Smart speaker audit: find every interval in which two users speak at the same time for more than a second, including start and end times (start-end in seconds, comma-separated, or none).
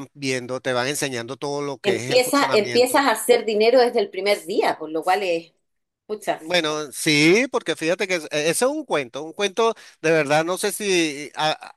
1.8-3.1